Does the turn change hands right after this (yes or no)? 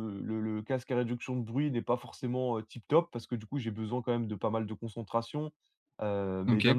no